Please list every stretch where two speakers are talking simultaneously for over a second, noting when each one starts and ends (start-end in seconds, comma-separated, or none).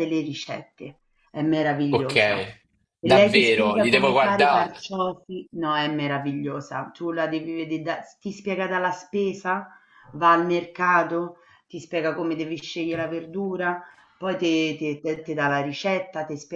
3.0-4.7